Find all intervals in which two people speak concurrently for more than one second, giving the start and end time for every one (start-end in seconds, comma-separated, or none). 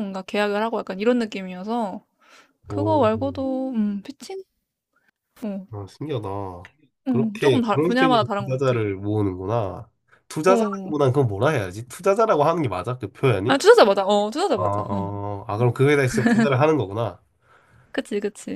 7.1-8.8